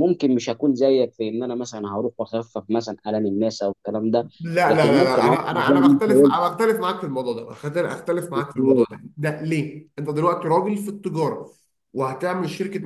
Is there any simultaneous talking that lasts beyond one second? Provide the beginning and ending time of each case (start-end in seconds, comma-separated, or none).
4.7-6.4